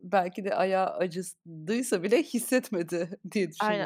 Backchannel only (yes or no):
no